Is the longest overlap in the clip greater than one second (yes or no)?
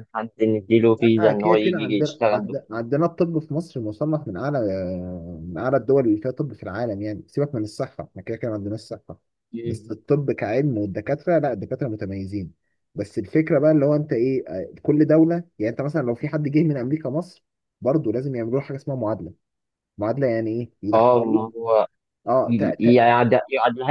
yes